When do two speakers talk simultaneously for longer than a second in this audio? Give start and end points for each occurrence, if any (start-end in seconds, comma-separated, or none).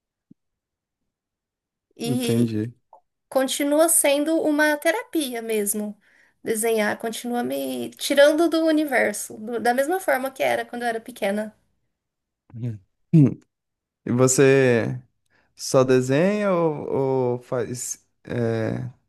none